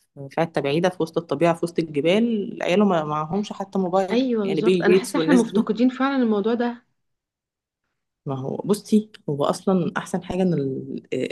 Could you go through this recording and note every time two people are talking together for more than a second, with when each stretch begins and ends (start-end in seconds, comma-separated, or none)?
4.1-5.7